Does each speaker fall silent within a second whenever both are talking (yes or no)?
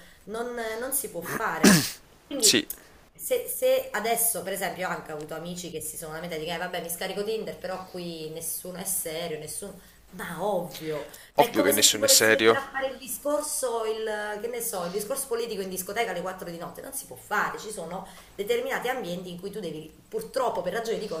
no